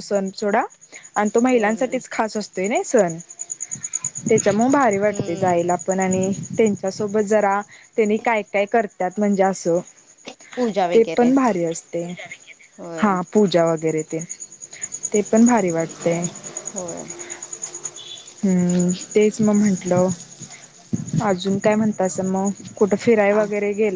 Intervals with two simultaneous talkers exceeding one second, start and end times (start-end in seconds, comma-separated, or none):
none